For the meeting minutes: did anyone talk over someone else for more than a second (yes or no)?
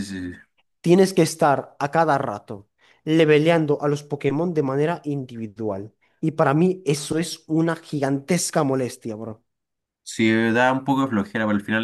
no